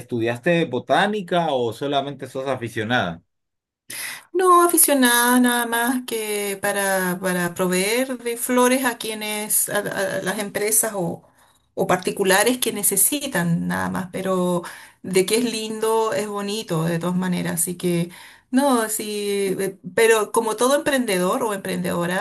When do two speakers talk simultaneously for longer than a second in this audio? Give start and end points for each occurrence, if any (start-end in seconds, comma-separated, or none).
none